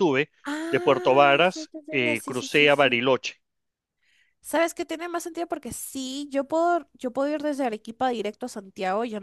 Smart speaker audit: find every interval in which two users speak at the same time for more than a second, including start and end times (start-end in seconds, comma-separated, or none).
0.7-3.0